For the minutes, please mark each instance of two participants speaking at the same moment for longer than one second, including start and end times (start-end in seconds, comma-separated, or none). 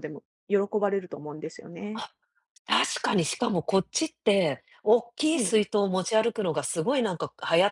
none